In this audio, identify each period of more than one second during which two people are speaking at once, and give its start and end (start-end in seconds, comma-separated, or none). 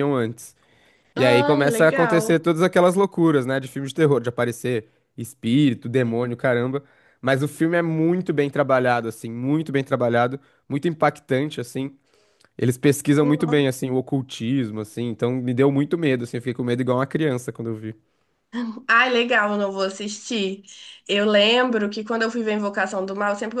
1.1-2.4